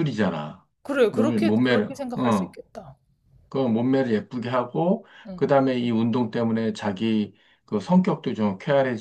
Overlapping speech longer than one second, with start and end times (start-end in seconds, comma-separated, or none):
1.1-2.6